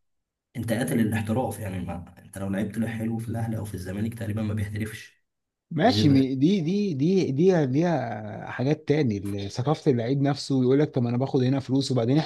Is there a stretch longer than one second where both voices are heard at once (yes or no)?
no